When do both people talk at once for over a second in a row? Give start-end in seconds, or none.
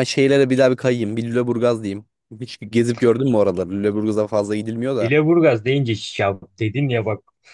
none